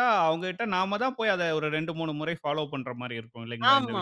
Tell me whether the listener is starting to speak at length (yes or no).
yes